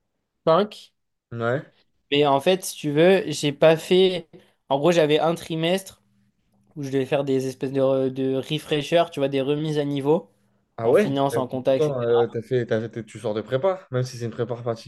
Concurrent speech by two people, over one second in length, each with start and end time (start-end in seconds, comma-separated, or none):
10.8-12.2